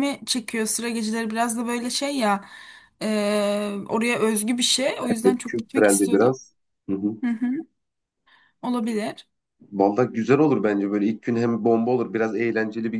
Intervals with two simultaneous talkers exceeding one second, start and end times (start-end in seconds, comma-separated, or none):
5.0-6.4